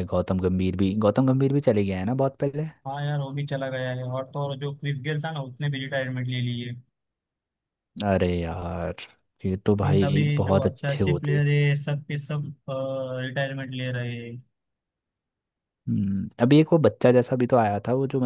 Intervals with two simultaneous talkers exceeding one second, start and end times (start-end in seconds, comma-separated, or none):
9.8-11.4